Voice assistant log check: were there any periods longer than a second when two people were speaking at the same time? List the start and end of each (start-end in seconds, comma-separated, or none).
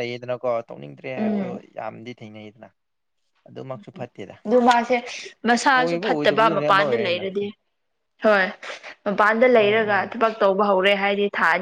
5.8-7.2